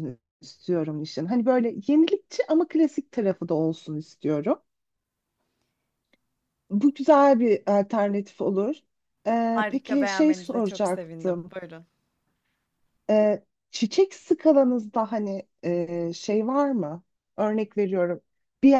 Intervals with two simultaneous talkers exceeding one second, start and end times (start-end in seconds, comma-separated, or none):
9.6-11.5